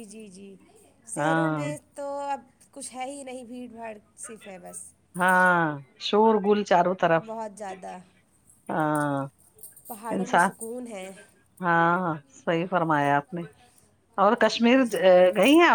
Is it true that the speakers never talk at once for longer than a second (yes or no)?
yes